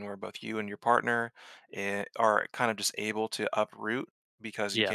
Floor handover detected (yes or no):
no